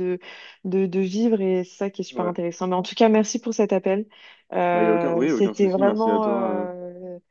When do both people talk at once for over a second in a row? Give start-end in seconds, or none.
4.7-6.7